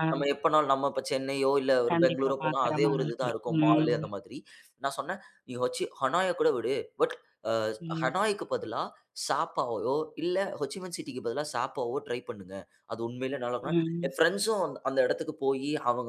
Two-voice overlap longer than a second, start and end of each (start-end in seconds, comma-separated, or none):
1.9-4.0